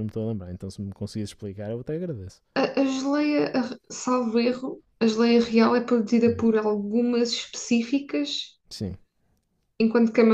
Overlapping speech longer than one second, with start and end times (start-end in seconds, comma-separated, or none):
none